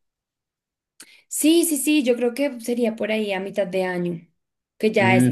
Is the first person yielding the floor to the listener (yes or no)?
yes